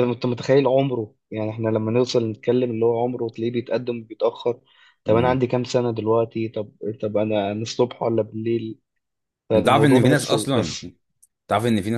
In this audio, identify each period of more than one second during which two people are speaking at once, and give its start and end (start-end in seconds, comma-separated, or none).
9.5-10.8